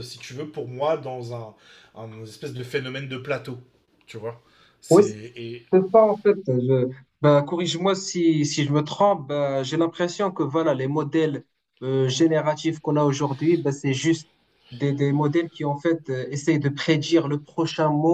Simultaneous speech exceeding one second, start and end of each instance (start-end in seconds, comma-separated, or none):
none